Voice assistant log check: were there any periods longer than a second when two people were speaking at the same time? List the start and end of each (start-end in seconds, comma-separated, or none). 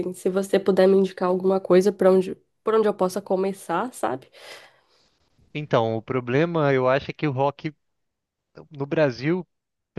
none